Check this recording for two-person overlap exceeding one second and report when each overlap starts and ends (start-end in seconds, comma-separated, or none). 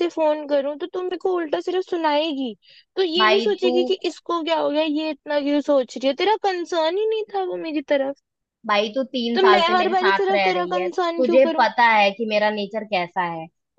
9.3-11.7